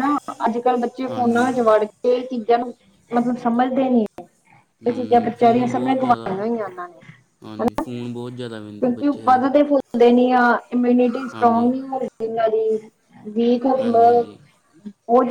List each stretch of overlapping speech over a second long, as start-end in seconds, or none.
4.9-6.4